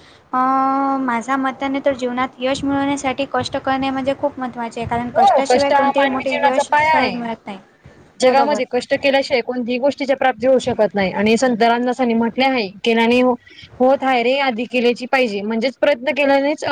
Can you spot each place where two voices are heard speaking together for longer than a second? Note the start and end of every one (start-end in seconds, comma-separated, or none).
5.2-7.2